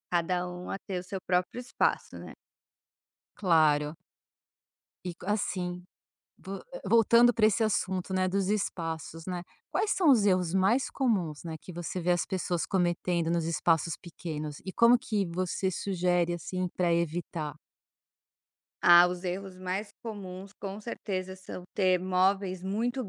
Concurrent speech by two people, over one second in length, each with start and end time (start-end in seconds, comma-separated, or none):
none